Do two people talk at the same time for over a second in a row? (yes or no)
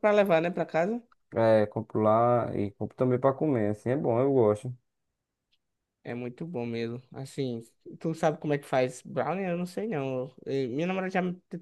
no